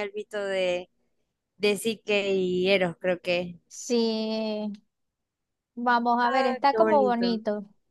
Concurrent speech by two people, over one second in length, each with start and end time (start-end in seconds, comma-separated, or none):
6.2-7.4